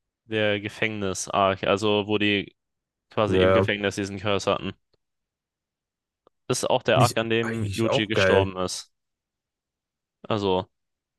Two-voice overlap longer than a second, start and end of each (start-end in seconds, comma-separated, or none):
6.9-8.5